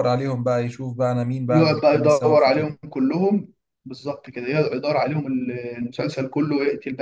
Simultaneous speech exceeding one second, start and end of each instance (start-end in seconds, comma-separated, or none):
1.5-2.8